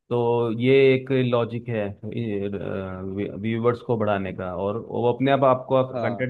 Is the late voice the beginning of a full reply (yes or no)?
no